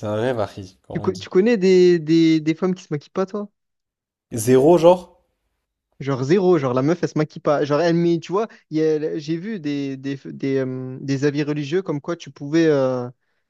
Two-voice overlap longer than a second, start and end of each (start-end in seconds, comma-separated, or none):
none